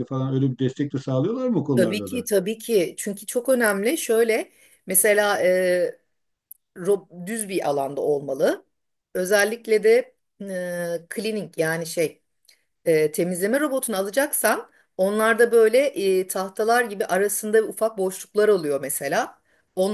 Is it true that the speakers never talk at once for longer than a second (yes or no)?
yes